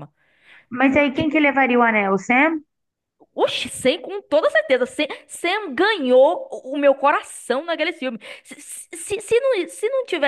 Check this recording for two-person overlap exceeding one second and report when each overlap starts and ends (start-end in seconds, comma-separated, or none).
none